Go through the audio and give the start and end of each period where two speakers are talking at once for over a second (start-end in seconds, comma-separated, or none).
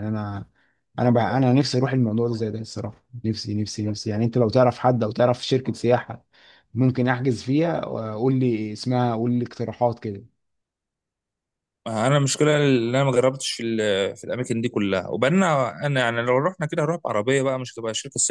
none